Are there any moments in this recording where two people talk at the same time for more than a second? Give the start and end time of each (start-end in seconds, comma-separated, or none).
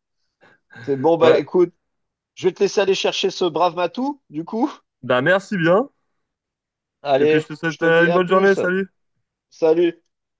7.2-8.6